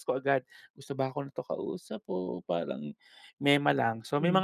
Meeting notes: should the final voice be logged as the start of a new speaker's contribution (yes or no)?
no